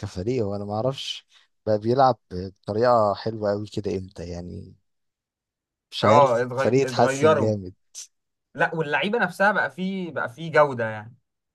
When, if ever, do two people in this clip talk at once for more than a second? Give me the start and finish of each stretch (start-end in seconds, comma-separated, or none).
6.0-7.5